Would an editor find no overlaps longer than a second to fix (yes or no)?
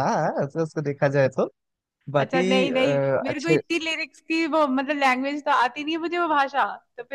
no